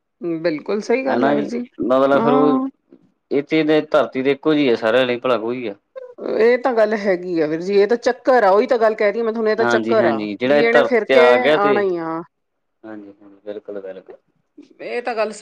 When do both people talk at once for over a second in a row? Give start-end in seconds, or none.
9.6-11.8